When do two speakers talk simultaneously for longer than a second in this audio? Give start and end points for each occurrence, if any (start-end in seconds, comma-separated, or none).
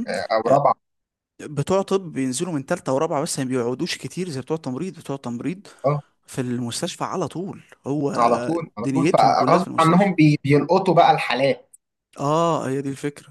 8.8-10.1